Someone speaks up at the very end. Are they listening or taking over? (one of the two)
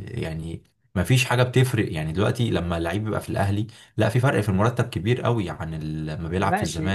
taking over